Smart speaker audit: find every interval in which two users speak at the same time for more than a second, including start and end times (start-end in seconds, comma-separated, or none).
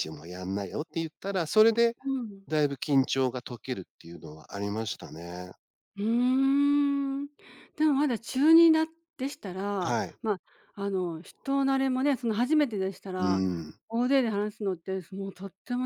none